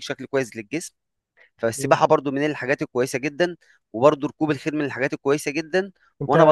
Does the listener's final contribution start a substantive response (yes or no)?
no